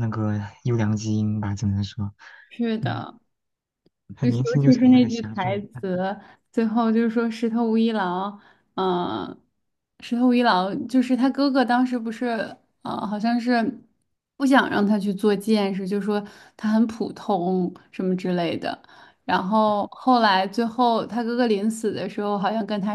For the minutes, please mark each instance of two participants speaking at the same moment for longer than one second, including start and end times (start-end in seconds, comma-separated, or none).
4.2-5.8